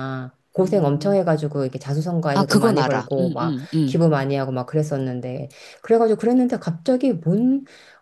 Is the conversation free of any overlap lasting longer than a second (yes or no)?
no